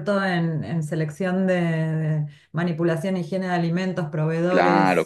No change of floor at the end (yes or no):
no